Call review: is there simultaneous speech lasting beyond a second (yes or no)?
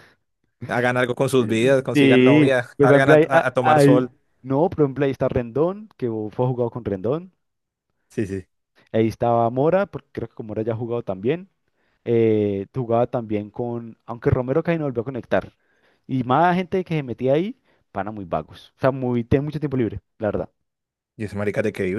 yes